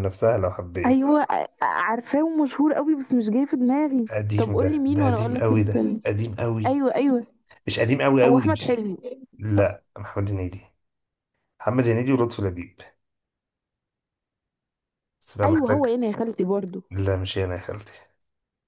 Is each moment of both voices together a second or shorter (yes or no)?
no